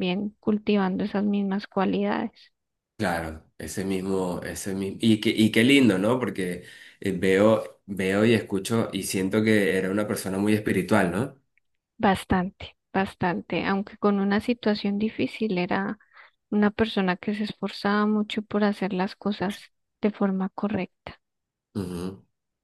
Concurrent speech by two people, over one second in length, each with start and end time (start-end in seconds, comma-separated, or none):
none